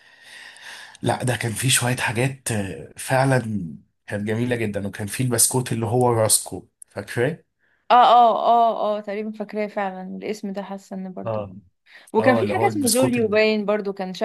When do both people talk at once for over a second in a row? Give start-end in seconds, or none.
12.2-13.4